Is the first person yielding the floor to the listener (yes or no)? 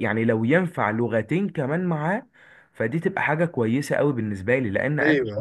yes